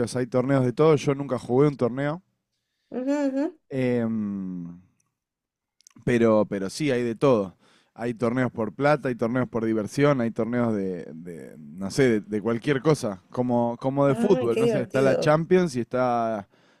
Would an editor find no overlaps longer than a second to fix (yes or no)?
no